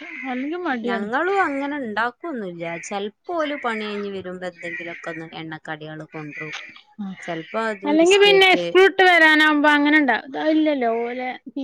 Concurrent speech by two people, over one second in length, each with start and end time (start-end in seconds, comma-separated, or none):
none